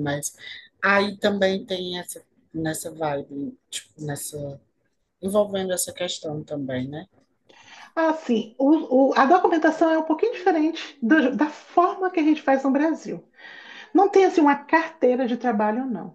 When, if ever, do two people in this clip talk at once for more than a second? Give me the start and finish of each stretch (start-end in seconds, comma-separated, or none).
none